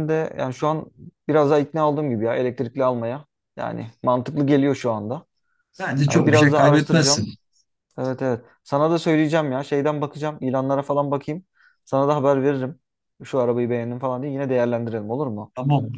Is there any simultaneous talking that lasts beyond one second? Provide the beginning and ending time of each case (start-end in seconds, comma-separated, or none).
6.1-7.3